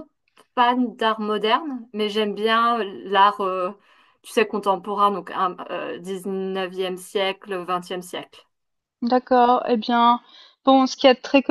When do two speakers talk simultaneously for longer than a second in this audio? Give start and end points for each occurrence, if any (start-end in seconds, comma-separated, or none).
none